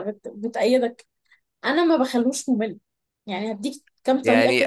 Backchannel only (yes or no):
no